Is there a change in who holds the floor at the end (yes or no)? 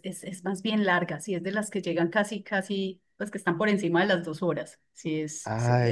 yes